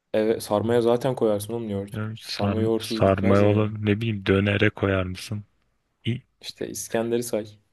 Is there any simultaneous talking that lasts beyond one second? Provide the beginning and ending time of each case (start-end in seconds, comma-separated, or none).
1.9-3.7